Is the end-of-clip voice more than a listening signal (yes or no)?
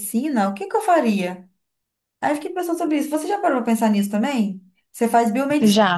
no